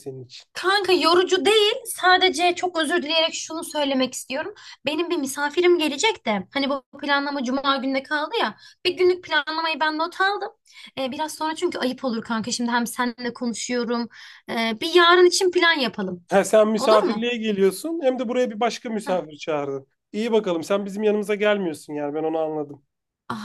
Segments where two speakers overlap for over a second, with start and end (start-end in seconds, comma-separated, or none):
none